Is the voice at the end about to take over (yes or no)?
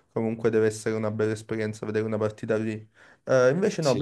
no